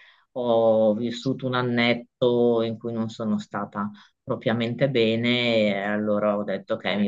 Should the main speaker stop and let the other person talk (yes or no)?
no